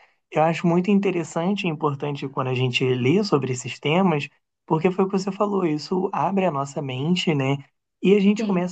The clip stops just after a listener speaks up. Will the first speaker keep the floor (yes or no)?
yes